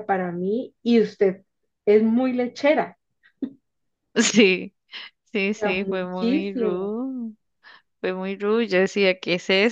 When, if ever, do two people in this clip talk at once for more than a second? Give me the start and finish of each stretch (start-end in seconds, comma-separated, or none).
5.5-6.9